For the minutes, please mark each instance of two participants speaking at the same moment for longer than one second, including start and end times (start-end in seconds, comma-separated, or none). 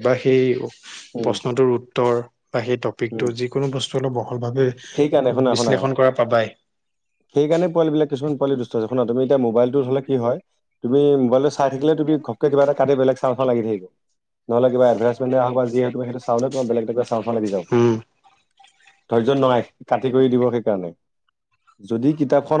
none